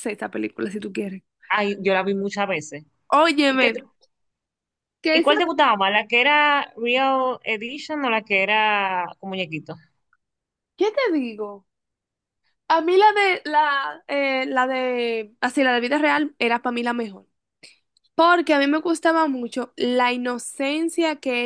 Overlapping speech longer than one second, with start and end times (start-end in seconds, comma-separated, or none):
none